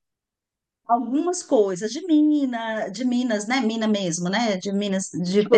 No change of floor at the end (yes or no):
no